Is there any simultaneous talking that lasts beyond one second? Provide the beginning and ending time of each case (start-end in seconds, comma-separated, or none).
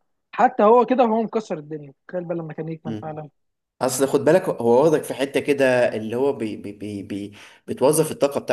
none